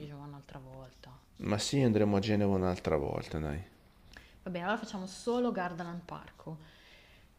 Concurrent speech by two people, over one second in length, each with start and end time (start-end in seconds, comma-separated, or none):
none